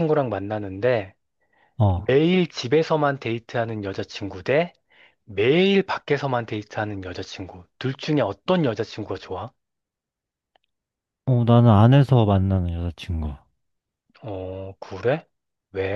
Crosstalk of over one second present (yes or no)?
no